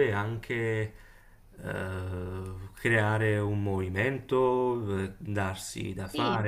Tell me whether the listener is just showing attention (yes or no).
yes